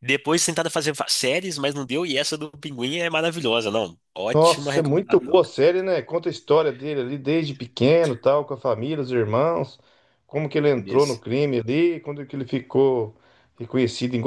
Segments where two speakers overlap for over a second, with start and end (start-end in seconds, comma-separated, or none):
4.3-5.6